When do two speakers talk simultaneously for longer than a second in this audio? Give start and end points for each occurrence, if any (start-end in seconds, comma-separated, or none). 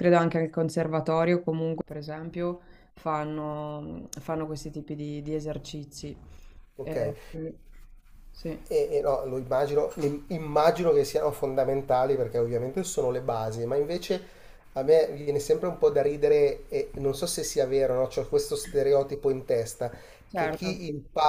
none